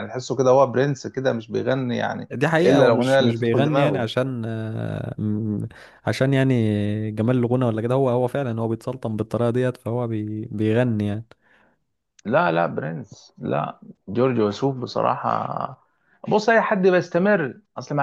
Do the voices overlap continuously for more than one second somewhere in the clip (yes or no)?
yes